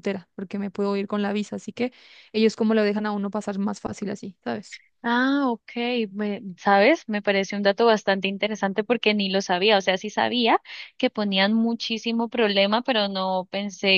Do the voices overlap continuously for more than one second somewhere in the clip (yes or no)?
no